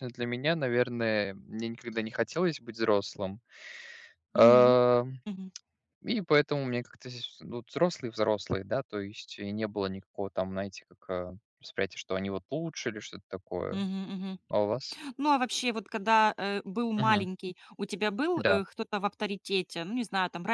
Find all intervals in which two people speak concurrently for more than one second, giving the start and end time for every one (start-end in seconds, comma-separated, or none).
none